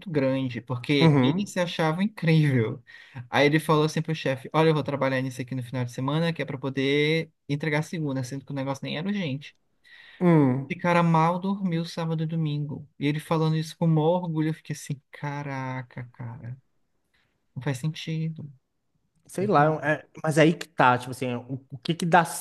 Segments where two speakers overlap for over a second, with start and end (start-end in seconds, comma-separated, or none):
none